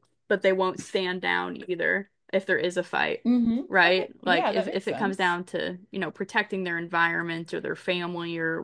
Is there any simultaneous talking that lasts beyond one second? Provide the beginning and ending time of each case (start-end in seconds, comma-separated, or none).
3.7-5.3